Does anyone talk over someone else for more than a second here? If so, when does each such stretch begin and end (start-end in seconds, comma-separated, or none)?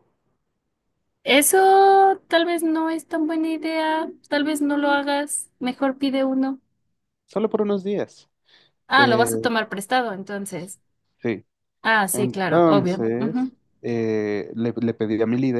12.1-13.5